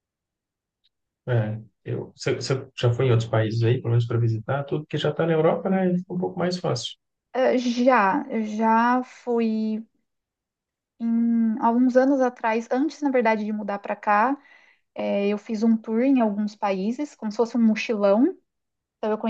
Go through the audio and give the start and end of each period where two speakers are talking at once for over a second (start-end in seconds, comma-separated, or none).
none